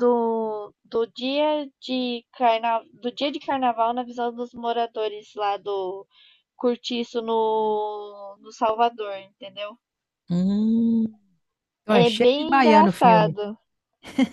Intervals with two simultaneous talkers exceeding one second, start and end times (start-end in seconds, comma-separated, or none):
11.9-13.4